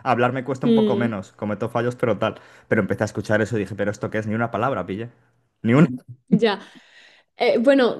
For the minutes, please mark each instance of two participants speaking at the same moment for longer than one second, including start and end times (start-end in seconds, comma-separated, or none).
none